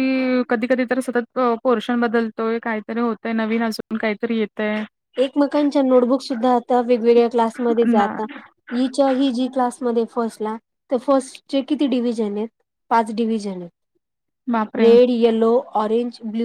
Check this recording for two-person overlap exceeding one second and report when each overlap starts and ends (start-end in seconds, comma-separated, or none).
none